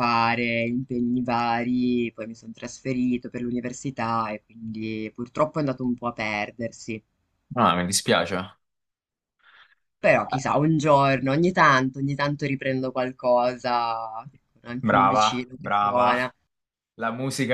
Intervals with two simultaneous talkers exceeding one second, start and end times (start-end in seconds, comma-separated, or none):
14.8-16.1